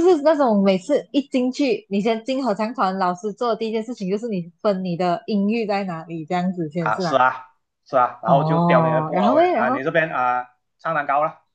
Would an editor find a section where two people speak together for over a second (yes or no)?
yes